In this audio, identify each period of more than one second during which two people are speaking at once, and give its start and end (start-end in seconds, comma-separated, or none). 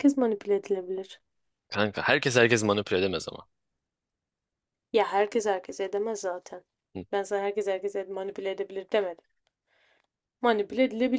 none